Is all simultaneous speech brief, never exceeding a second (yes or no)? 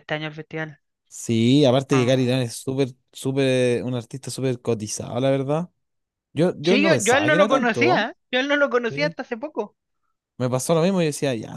no